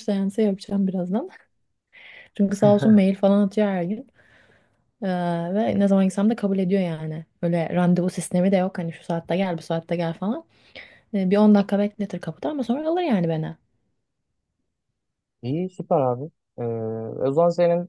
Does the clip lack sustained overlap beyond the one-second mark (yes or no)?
yes